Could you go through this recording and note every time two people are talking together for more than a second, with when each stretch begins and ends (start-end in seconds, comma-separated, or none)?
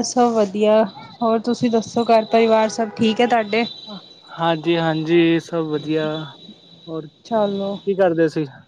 none